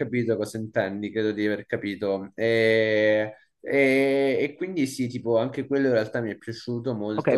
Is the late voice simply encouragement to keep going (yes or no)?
no